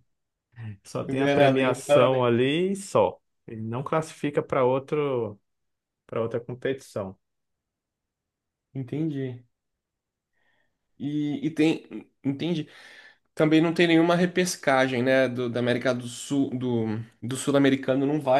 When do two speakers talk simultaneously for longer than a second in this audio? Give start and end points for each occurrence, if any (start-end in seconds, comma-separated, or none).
1.0-2.2